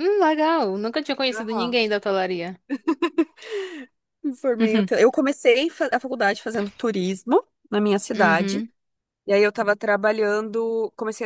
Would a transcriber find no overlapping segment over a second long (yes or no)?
yes